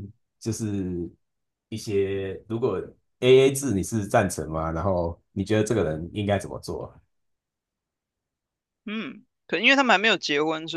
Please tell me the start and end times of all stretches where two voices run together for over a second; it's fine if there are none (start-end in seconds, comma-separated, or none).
none